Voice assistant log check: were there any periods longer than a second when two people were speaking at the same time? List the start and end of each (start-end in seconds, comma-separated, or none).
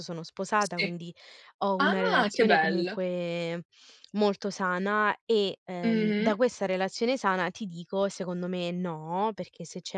1.8-3.0